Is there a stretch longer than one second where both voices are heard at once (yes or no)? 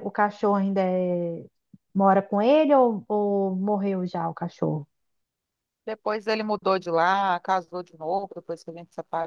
no